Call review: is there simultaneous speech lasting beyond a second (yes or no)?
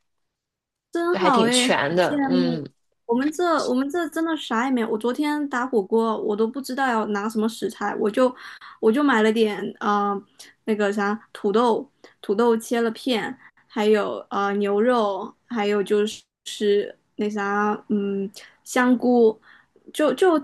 yes